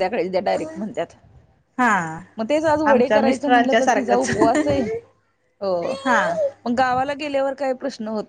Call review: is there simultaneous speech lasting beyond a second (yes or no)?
yes